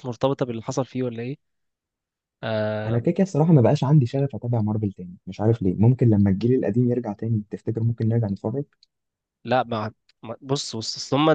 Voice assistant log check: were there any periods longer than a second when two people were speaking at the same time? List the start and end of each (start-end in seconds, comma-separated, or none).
none